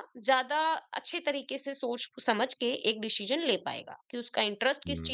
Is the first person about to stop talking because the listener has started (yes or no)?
no